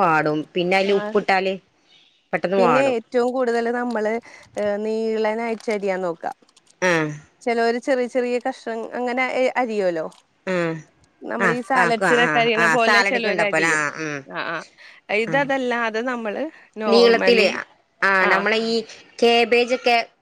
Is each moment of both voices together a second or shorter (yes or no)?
no